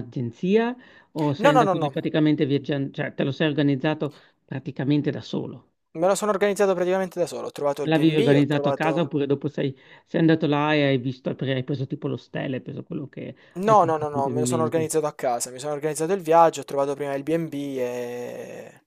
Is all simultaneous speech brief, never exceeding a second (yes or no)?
no